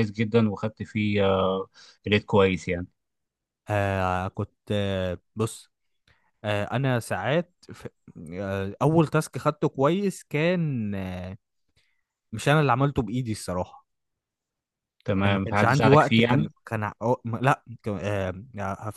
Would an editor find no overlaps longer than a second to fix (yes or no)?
no